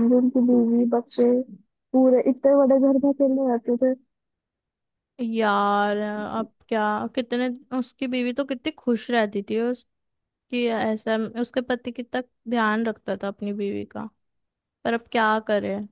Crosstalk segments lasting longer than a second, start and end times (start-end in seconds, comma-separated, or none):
none